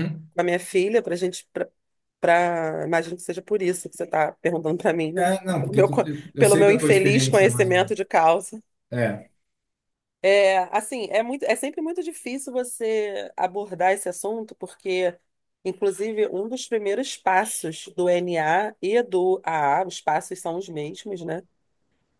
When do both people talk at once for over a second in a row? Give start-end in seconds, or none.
5.2-8.0